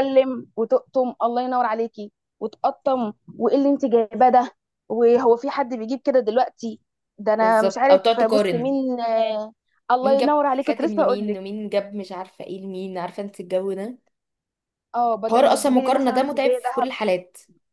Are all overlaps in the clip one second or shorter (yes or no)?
no